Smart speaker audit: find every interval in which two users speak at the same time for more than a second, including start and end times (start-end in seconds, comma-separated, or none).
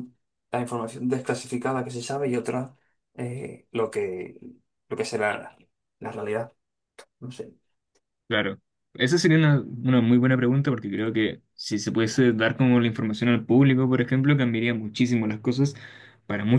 none